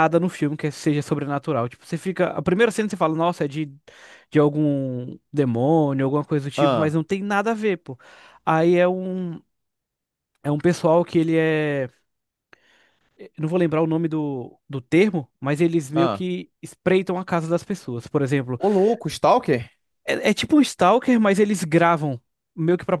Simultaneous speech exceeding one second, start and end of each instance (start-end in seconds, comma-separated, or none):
none